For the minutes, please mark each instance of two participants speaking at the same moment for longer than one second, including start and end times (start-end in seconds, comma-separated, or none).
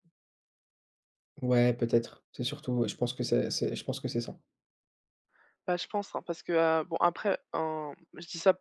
none